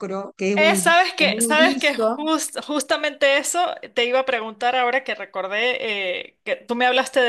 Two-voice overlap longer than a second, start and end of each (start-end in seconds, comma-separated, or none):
0.5-2.3